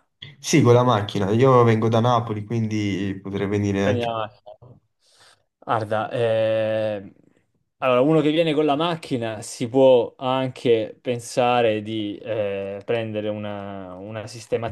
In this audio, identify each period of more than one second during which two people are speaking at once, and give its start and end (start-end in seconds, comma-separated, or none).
none